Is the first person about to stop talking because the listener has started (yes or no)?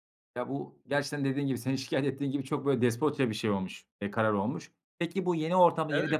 no